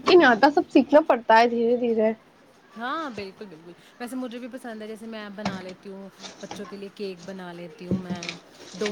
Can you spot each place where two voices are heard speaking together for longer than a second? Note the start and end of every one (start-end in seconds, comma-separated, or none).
none